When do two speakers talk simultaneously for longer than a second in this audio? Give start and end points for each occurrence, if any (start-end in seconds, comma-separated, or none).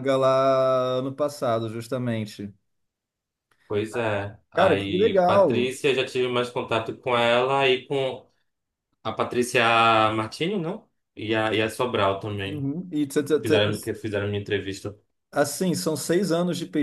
4.5-5.7